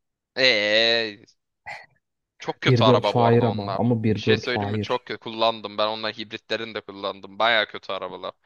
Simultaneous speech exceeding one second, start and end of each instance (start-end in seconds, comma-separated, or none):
2.7-5.0